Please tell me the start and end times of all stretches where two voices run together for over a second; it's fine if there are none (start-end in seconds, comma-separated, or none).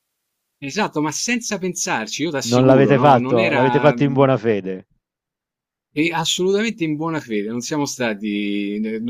2.5-4.0